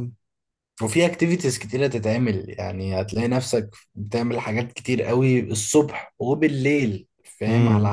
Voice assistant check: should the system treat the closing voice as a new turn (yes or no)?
no